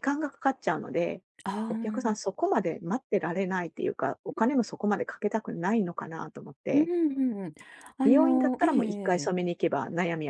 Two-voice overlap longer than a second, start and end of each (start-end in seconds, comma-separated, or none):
8.0-9.3